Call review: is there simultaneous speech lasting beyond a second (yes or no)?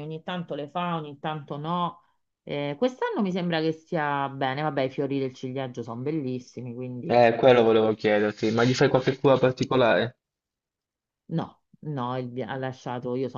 no